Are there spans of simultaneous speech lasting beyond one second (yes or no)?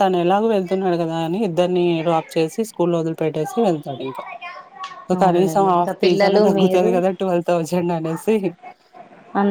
yes